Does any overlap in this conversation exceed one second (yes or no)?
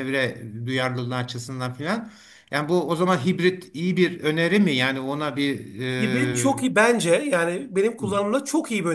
no